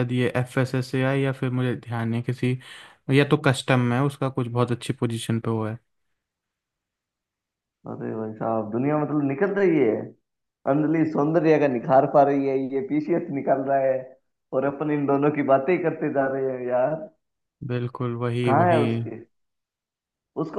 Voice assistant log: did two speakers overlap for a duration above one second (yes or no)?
no